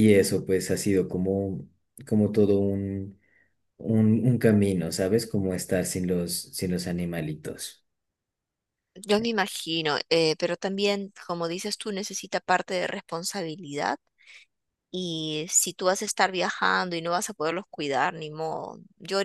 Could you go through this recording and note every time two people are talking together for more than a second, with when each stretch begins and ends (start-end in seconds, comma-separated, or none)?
none